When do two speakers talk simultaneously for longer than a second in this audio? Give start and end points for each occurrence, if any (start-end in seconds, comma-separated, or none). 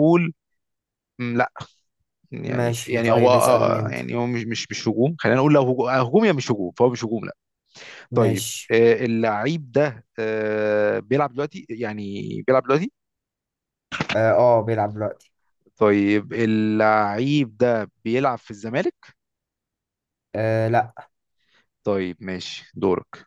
2.5-4.0